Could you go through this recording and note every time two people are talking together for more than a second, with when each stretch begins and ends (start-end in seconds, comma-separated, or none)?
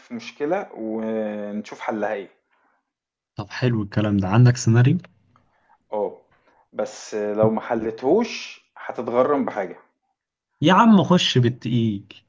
none